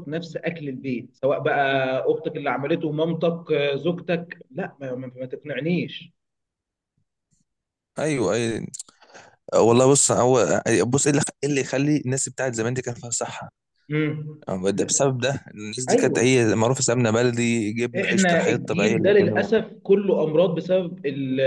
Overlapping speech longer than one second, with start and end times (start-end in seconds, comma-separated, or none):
18.0-19.5